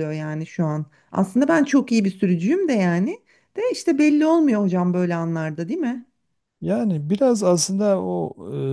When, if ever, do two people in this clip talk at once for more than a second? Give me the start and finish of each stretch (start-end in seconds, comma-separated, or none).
none